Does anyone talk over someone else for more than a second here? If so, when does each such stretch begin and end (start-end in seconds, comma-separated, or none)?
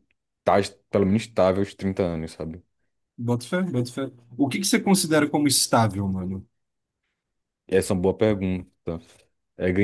none